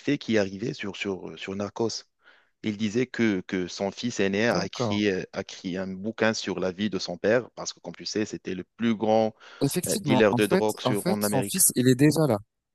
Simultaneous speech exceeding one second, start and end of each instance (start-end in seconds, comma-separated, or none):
9.9-11.6